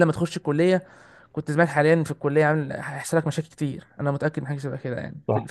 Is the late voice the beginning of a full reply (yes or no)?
yes